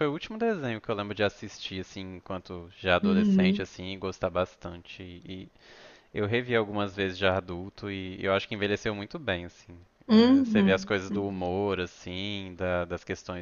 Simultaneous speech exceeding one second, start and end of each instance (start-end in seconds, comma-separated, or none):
10.1-11.5